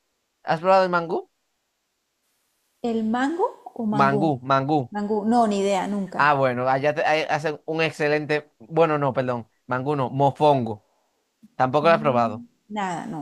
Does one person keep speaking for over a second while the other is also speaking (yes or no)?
no